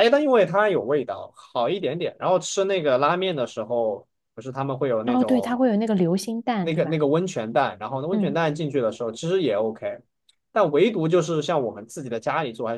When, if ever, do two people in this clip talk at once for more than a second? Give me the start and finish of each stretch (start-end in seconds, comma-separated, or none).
none